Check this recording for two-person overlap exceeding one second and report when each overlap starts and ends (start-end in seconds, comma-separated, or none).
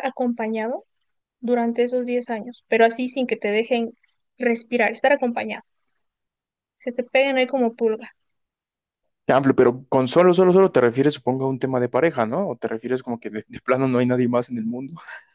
none